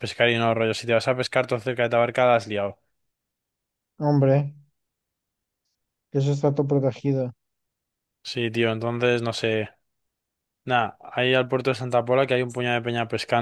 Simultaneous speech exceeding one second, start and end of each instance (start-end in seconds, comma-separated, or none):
none